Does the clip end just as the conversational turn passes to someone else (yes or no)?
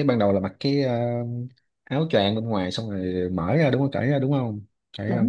yes